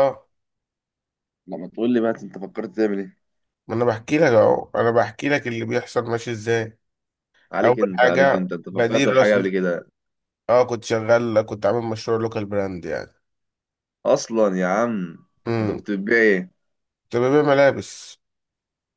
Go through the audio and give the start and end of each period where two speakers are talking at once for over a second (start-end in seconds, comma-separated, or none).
7.6-9.4